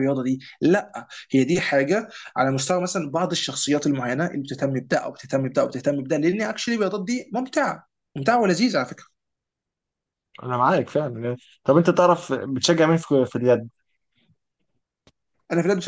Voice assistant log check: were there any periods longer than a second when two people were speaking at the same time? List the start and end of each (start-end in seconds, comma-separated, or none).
none